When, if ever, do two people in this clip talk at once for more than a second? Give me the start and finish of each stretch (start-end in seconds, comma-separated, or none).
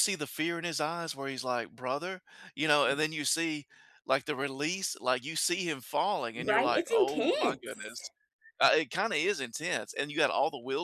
6.4-8.0